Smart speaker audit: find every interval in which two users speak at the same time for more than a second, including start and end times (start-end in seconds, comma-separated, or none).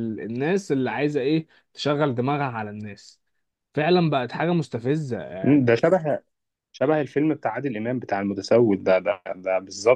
none